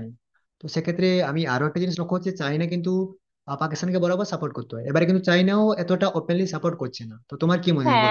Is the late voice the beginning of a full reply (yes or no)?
yes